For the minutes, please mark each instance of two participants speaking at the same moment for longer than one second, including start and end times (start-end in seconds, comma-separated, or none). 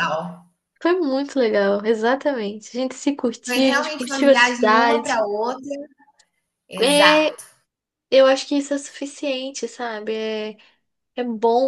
3.5-5.2